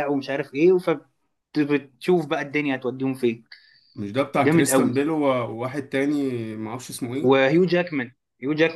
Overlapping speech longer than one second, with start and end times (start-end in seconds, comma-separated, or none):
none